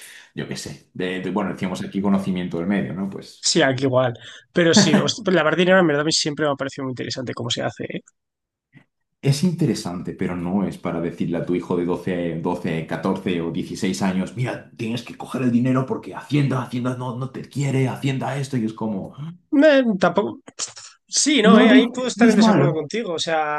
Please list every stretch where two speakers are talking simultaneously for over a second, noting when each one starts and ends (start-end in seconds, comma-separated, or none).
21.4-22.8